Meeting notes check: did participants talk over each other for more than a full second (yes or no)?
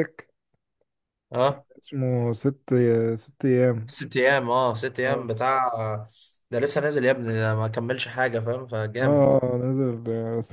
no